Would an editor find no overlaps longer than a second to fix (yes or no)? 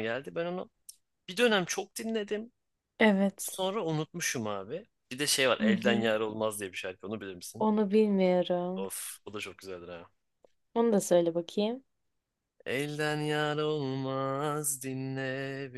yes